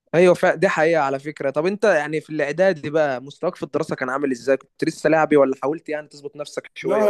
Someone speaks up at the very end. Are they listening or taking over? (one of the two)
taking over